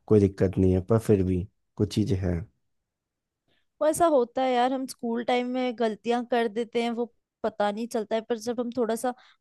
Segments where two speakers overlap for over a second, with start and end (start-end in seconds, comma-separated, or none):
none